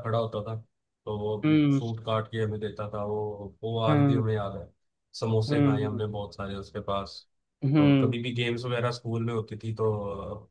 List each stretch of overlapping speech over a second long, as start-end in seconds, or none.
none